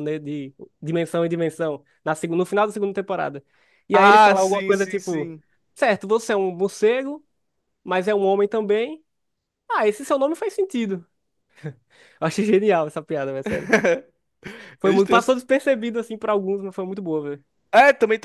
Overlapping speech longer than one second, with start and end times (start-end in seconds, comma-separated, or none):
3.9-5.3